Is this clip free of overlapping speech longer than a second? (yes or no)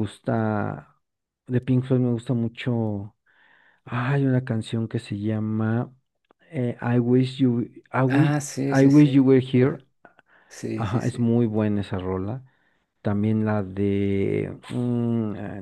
no